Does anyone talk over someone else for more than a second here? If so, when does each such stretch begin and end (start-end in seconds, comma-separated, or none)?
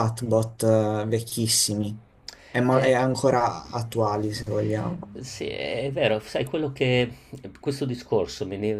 none